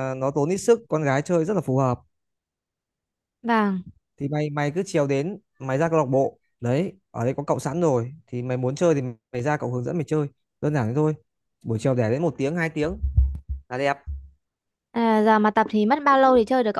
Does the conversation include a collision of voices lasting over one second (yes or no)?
no